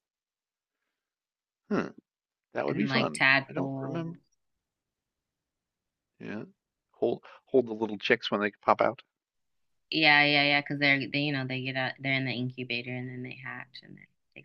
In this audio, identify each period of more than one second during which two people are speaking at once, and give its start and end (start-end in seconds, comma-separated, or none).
2.7-4.2